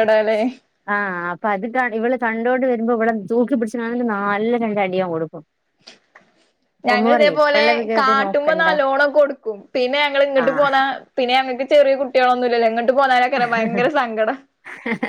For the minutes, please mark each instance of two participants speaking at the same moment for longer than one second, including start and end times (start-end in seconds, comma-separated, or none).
6.9-8.7